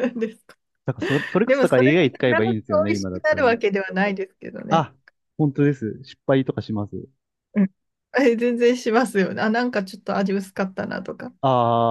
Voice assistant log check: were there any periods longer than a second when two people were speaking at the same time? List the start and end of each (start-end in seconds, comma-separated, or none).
1.5-3.6